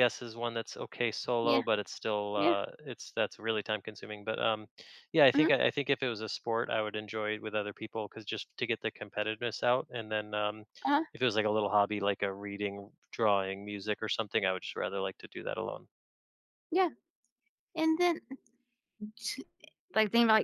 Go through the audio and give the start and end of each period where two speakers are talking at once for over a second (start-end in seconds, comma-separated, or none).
none